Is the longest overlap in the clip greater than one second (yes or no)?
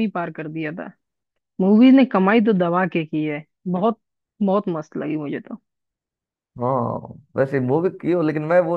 no